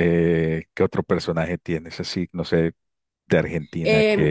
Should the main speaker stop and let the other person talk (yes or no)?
yes